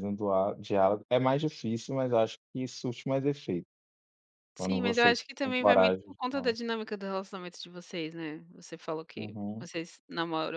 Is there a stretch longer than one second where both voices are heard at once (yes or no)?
yes